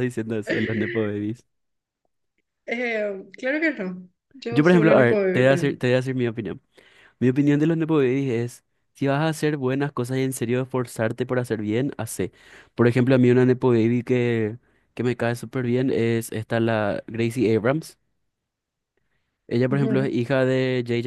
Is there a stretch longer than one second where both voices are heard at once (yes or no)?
yes